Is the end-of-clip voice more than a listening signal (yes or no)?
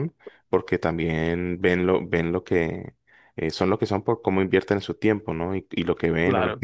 no